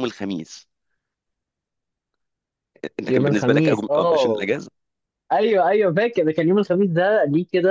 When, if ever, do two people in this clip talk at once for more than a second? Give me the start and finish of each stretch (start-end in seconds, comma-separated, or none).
3.1-4.5